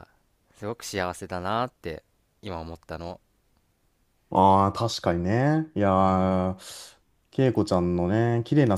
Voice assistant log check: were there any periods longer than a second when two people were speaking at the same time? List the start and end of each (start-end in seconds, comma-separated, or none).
none